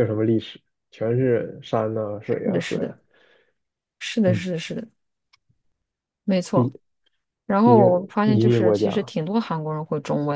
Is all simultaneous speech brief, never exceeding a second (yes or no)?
no